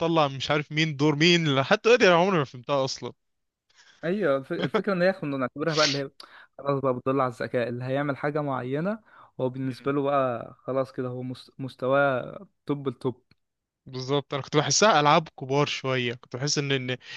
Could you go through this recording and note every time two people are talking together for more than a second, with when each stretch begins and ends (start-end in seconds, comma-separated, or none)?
none